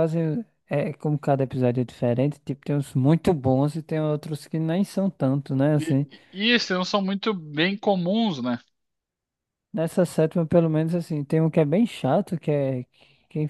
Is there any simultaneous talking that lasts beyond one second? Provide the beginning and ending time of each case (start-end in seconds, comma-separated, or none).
none